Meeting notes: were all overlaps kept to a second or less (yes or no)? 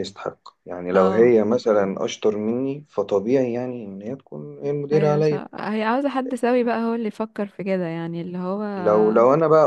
yes